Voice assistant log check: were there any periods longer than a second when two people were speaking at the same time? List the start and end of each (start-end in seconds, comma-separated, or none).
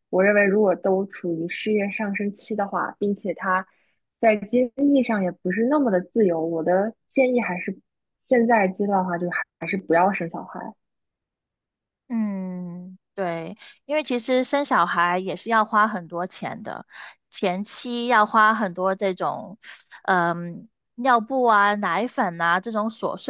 none